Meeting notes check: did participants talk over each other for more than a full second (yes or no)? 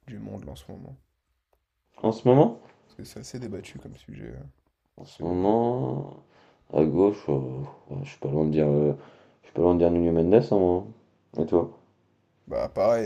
no